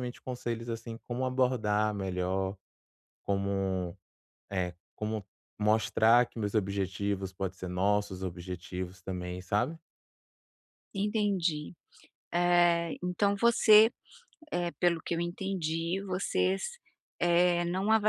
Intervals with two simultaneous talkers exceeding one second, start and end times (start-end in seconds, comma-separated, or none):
none